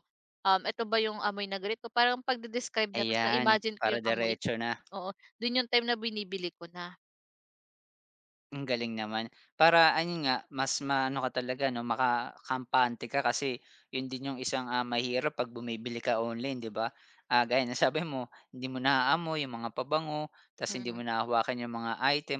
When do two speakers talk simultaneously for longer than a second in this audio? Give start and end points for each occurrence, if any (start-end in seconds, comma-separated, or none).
3.0-4.3